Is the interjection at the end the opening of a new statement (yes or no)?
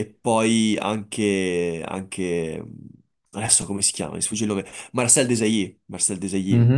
yes